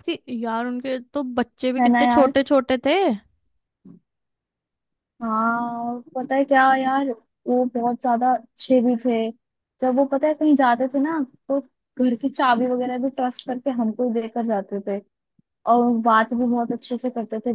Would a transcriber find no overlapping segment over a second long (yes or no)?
yes